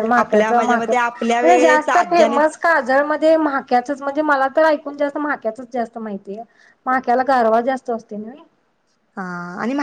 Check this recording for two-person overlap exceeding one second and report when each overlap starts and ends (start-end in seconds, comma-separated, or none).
0.8-2.5